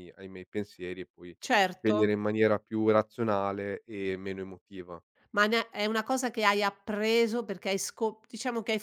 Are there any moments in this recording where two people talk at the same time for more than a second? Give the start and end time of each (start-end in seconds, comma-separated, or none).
none